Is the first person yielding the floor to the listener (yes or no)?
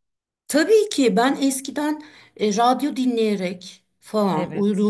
no